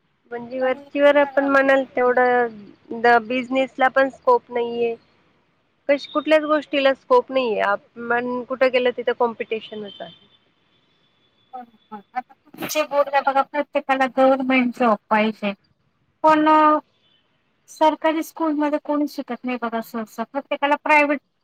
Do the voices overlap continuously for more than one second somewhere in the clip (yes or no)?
yes